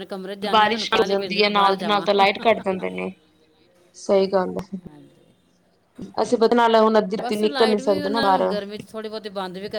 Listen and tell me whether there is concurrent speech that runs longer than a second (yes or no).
yes